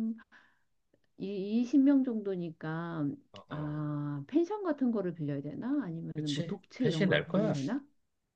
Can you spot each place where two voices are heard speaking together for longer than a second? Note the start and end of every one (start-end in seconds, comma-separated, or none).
6.2-7.5